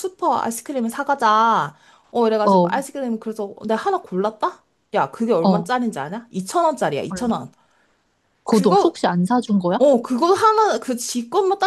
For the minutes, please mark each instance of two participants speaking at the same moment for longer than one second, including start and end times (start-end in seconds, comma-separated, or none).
none